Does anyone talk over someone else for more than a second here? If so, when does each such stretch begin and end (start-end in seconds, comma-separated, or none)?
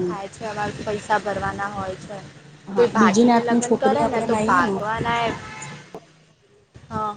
2.8-4.7